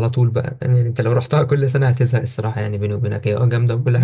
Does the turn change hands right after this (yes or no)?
yes